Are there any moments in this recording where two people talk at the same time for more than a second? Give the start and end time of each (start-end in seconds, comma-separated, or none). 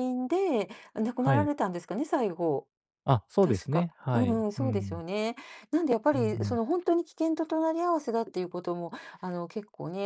3.4-5.0